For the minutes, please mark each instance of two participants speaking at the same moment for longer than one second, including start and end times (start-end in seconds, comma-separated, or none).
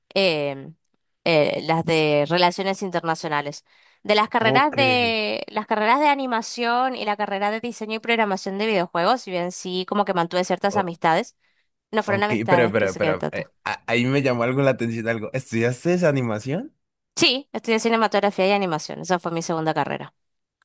12.1-13.5